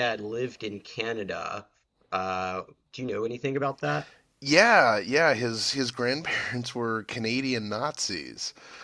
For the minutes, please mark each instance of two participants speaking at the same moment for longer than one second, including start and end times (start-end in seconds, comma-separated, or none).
none